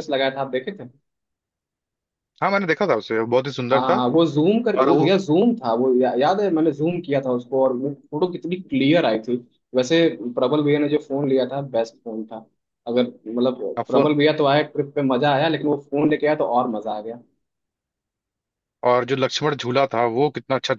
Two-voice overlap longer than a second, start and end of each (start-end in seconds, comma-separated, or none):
none